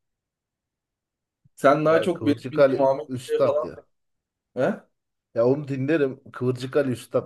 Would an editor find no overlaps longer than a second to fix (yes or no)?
no